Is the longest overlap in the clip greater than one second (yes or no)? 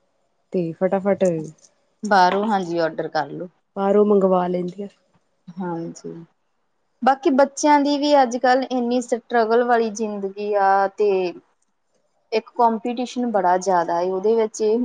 no